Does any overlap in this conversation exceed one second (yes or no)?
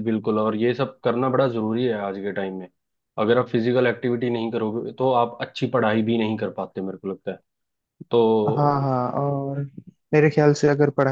no